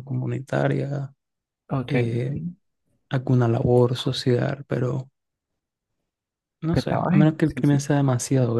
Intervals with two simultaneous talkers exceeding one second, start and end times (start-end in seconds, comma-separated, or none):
6.6-7.8